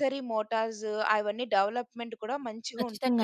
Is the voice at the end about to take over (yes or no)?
yes